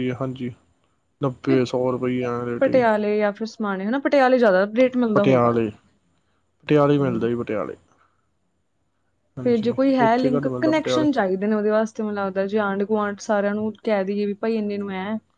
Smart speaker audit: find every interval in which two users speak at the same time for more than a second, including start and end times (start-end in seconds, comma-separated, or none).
9.4-11.1